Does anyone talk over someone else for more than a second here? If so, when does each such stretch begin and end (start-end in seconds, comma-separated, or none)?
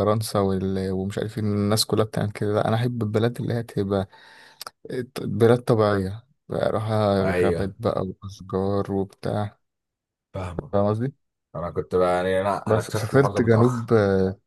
12.7-13.9